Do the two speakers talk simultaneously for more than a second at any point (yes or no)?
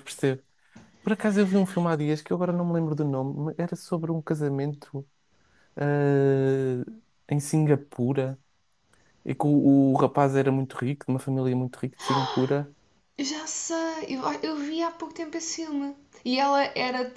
no